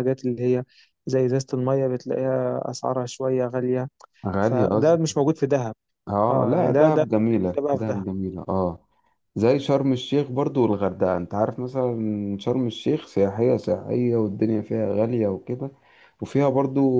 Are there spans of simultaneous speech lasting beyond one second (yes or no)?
yes